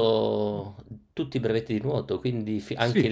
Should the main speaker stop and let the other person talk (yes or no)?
yes